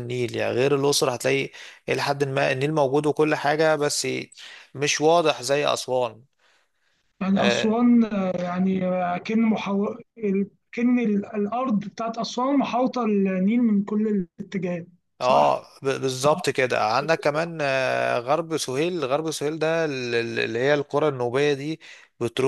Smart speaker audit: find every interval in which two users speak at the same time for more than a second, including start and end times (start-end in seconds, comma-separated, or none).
none